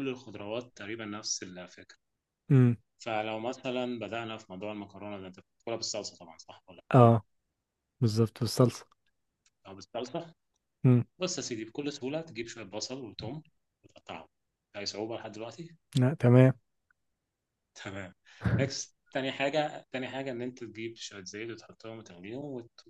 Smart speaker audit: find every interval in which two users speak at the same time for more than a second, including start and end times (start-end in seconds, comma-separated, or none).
none